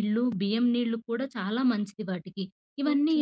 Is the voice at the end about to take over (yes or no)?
no